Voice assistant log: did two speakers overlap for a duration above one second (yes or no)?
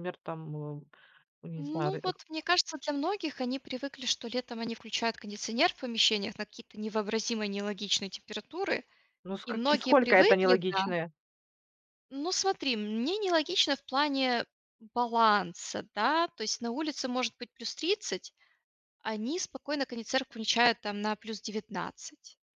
yes